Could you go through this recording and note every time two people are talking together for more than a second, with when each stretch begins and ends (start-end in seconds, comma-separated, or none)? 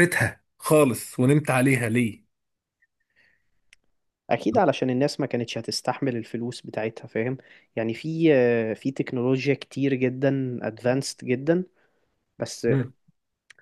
none